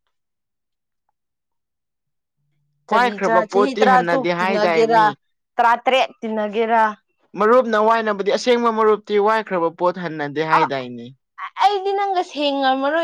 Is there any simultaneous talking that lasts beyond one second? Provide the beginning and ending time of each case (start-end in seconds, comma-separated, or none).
2.9-5.0